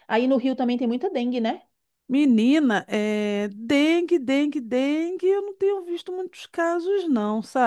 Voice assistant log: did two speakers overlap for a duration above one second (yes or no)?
no